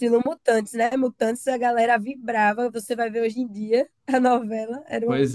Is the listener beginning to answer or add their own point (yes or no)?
yes